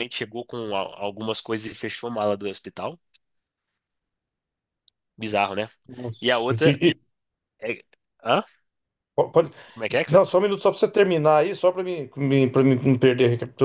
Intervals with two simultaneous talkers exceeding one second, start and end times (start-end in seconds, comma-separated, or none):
none